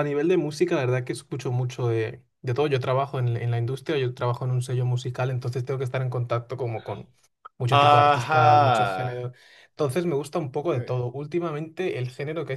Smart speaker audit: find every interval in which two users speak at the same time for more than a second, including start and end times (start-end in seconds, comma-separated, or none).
7.7-9.1